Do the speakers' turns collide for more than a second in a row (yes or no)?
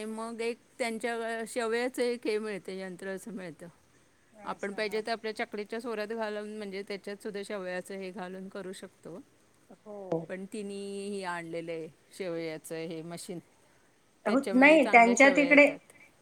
yes